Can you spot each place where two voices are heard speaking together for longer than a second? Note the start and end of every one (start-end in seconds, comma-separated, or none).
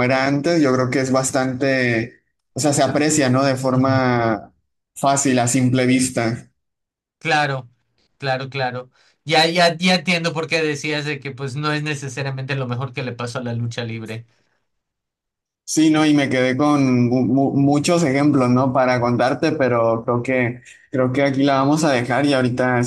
none